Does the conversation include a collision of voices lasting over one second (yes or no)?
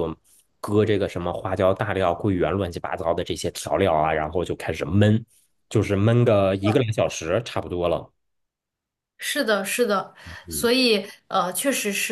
no